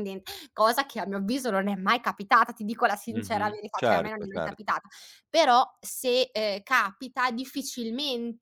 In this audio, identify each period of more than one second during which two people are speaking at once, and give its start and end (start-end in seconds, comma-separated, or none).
3.1-4.8